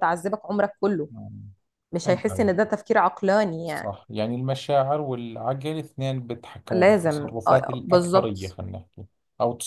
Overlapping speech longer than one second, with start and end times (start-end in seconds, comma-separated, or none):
6.7-8.6